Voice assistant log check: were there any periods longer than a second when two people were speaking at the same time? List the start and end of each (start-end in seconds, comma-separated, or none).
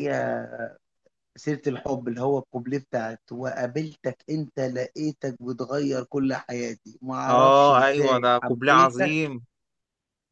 7.3-9.1